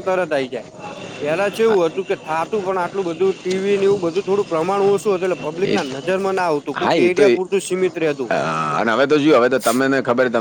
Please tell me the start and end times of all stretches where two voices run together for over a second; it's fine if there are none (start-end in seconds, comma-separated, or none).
none